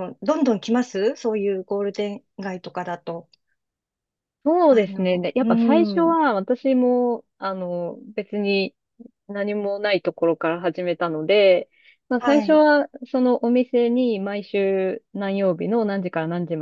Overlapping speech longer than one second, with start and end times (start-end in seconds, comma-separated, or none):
4.7-6.2